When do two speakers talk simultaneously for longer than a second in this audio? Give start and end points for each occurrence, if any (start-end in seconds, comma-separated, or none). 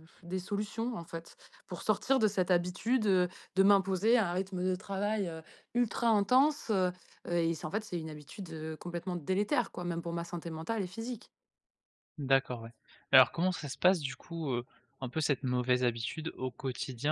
none